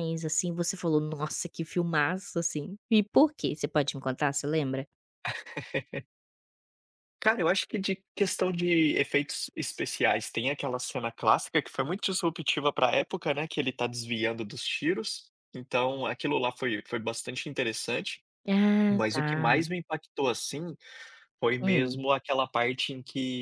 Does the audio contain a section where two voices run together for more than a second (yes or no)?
no